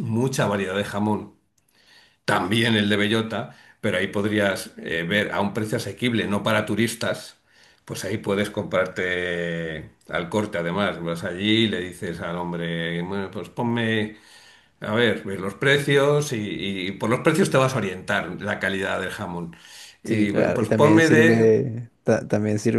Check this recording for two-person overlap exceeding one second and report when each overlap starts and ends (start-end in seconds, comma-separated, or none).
20.0-21.5